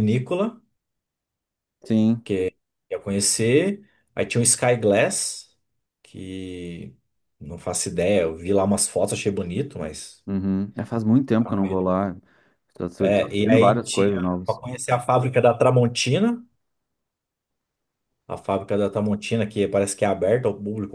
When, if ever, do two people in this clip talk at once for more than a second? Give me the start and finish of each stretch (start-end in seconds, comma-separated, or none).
13.0-14.6